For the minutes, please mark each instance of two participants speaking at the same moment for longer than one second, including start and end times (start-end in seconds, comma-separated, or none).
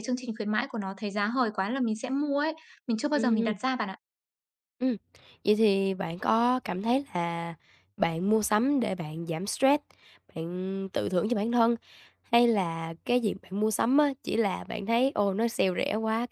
none